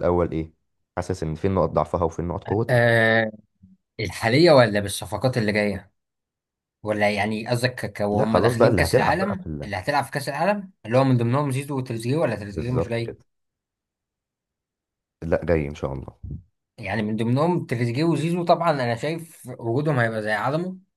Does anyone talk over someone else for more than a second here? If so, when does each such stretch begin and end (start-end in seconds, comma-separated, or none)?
8.1-9.7